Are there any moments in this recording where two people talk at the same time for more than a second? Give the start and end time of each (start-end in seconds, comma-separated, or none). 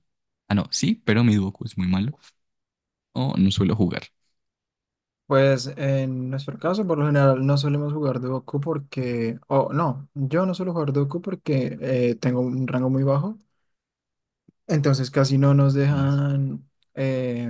none